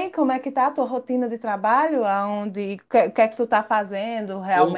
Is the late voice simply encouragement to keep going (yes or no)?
no